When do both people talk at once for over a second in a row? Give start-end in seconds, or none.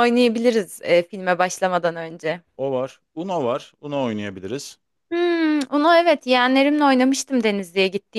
none